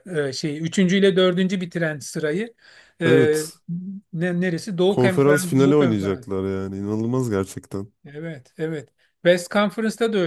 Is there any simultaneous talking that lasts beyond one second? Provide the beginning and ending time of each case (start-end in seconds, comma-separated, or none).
4.9-6.3